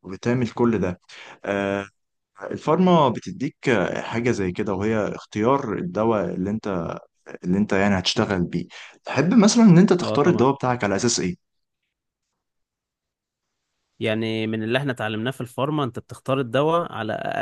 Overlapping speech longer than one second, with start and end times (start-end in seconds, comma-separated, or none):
none